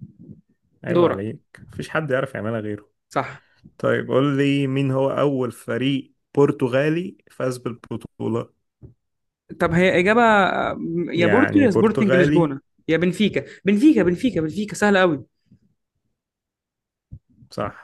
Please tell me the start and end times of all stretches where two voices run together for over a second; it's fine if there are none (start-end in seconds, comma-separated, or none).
11.2-12.6